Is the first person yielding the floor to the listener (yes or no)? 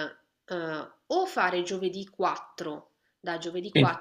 no